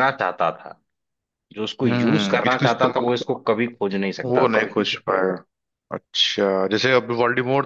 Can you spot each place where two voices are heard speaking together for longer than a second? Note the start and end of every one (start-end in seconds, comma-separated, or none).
1.9-3.2